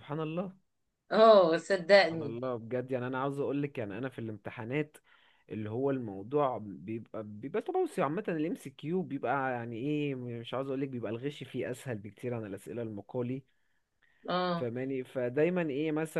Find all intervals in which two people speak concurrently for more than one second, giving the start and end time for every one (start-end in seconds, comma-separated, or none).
none